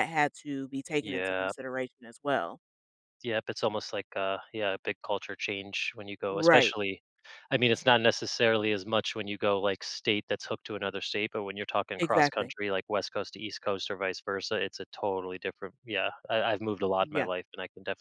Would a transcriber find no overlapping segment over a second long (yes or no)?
yes